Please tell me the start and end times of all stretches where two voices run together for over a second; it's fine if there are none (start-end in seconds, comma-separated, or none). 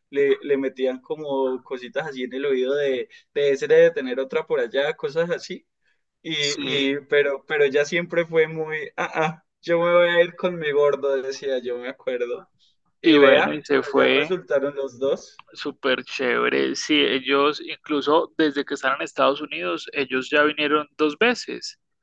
13.0-14.4